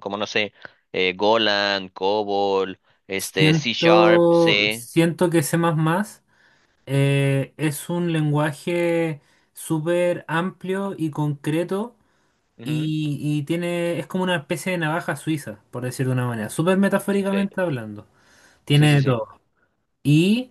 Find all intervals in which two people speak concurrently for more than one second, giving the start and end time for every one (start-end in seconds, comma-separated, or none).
3.2-4.9